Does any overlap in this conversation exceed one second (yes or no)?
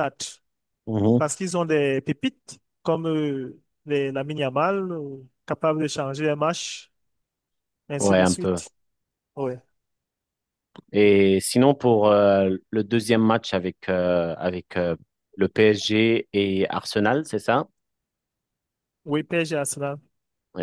no